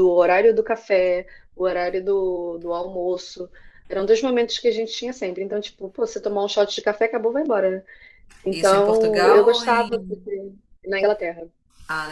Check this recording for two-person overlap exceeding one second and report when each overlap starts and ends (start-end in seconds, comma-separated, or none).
8.5-9.9